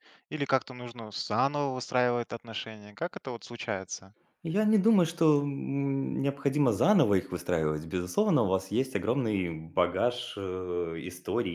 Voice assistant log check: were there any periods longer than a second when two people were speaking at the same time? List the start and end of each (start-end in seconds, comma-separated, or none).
none